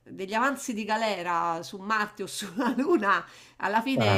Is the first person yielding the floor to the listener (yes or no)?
no